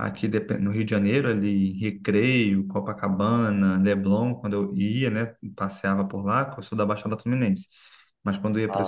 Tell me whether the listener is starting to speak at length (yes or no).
no